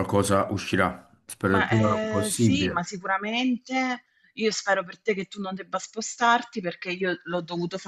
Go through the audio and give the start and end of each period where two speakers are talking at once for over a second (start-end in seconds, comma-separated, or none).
1.5-2.9